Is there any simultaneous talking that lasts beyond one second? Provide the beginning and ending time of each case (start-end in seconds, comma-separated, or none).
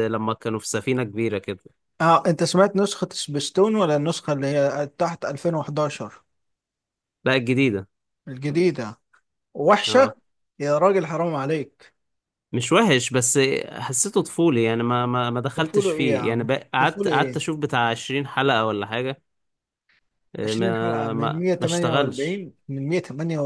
15.6-17.4, 20.4-22.4